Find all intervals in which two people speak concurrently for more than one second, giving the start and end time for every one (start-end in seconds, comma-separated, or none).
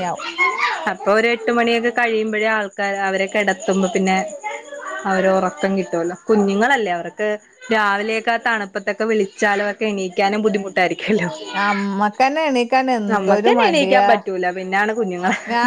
none